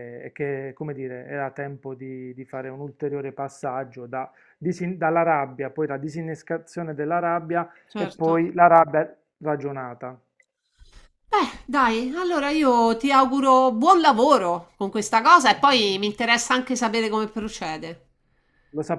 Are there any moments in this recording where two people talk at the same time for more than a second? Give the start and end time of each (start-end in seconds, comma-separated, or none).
none